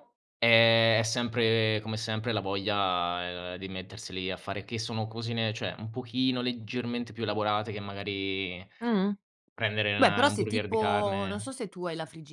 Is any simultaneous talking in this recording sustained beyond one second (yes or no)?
yes